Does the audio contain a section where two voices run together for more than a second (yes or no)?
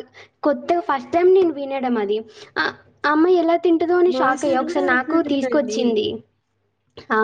yes